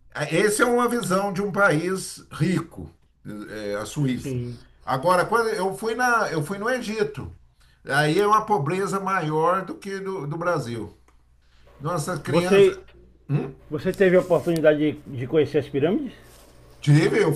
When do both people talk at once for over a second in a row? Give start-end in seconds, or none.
none